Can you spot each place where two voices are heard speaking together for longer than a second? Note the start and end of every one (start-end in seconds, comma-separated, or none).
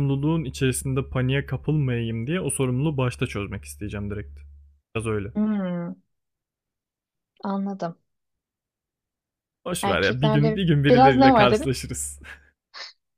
9.8-11.8